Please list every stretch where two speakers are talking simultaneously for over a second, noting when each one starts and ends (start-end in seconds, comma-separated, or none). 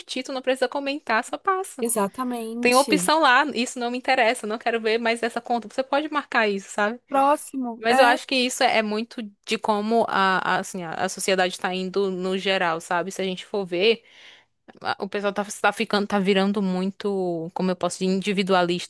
none